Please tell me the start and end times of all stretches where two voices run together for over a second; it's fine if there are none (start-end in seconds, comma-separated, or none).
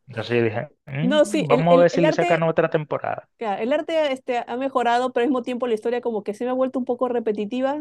1.0-2.4